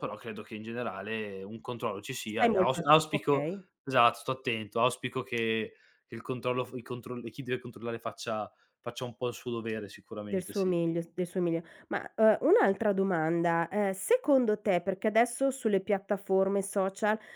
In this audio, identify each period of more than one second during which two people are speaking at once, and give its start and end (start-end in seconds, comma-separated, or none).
2.2-3.6